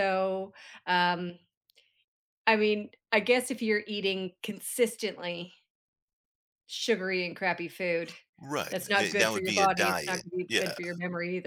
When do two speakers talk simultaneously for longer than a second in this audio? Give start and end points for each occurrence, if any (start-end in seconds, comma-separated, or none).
8.7-10.7